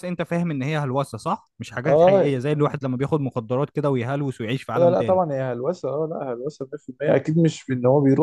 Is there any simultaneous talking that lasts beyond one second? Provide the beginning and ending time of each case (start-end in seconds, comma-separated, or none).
none